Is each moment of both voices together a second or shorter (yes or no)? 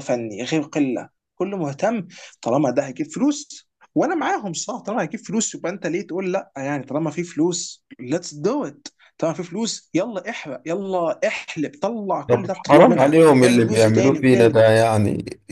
no